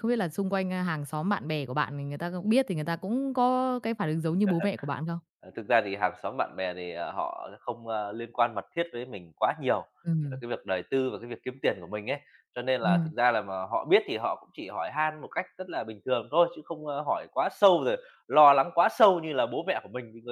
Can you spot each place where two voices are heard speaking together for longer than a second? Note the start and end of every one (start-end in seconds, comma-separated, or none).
none